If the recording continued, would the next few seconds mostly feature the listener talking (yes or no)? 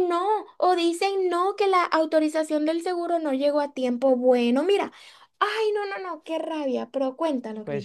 yes